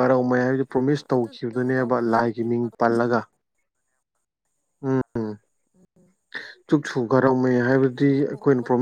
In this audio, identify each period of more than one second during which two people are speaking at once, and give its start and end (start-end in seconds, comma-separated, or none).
0.7-2.7